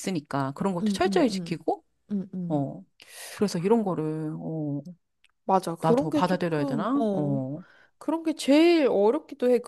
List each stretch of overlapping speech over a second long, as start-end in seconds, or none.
5.8-7.4